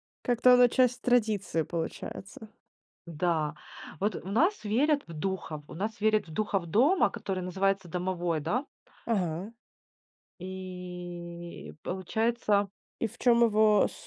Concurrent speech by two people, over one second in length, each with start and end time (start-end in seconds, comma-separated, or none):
none